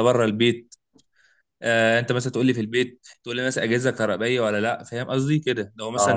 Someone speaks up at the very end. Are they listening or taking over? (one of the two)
listening